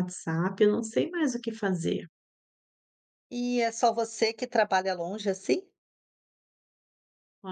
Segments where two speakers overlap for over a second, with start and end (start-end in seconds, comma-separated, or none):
none